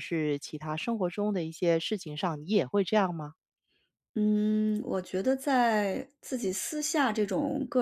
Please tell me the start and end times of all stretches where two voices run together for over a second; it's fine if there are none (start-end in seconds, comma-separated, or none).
none